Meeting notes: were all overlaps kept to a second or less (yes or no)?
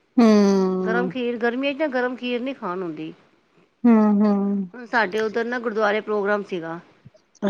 yes